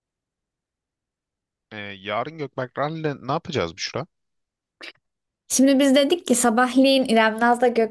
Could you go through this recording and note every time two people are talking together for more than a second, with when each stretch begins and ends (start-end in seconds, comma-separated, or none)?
none